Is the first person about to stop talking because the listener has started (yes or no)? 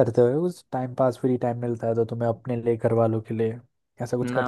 yes